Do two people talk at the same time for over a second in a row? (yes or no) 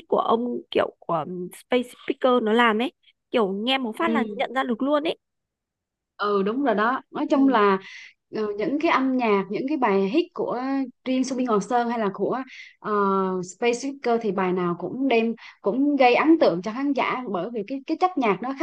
no